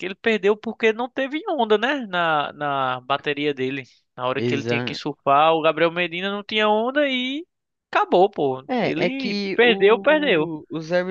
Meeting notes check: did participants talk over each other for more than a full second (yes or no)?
yes